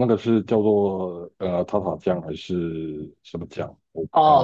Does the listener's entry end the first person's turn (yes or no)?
yes